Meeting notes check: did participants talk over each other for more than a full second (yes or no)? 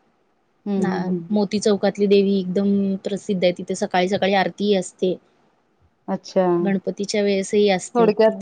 no